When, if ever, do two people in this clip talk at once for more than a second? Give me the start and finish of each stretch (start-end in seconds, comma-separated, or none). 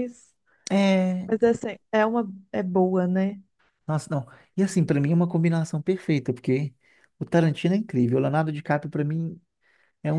none